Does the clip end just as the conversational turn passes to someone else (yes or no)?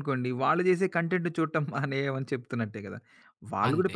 no